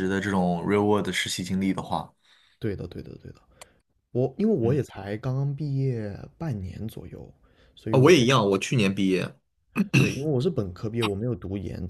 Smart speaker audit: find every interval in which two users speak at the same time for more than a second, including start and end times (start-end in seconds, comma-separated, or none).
none